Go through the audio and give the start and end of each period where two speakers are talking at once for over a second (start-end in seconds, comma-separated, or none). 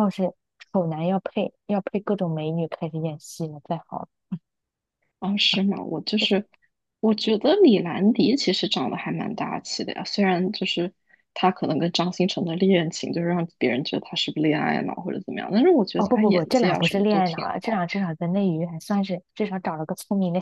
16.0-17.8